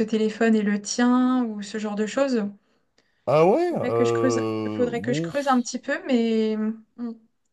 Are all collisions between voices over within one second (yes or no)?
no